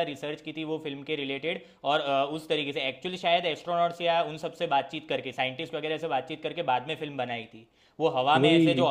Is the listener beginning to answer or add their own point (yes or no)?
no